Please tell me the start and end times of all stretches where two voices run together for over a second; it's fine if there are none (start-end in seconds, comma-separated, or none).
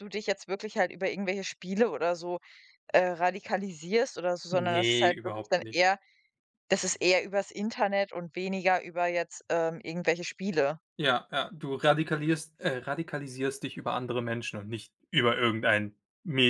4.5-5.9